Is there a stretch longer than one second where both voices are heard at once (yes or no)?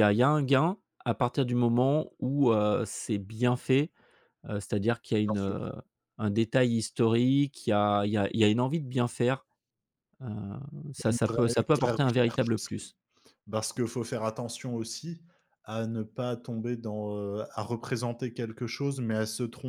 yes